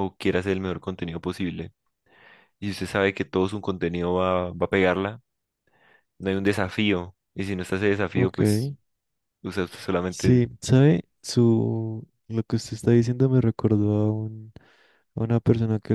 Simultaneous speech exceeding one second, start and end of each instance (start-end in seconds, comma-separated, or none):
none